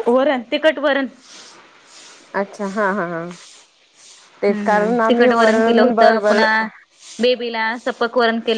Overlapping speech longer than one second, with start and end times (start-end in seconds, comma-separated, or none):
4.5-6.4